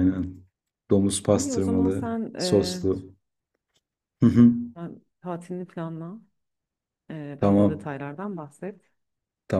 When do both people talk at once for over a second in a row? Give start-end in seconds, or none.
1.3-2.8